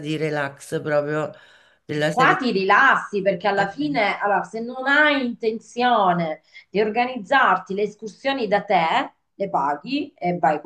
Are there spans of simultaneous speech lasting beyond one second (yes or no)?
no